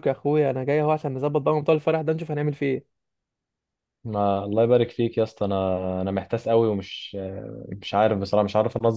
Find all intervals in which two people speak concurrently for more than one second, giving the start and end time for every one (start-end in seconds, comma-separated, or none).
none